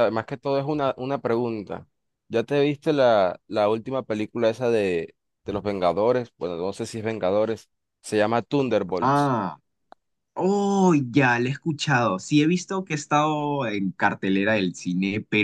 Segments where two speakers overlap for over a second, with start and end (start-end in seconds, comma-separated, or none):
none